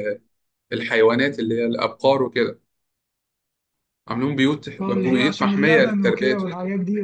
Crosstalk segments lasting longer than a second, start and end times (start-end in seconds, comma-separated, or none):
4.8-6.4